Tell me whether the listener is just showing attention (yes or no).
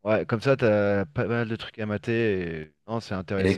no